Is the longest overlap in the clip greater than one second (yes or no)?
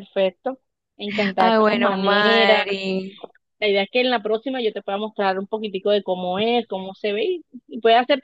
yes